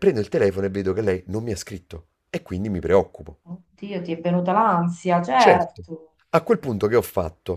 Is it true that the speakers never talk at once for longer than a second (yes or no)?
yes